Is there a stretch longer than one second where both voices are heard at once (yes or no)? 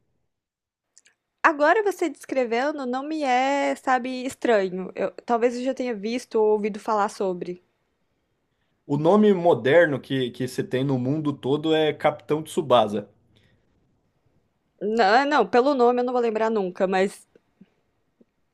no